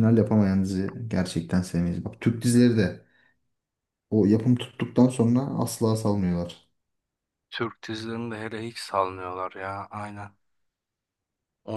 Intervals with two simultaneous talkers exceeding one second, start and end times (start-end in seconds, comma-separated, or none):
none